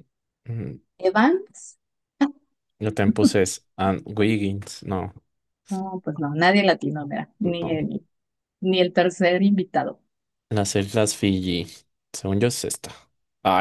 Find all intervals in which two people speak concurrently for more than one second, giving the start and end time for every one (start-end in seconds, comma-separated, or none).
none